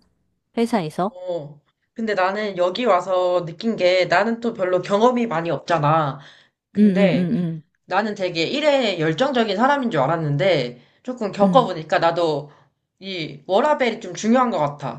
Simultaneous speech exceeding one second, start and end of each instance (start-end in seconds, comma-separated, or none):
none